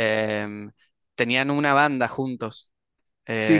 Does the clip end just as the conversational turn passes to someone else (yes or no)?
yes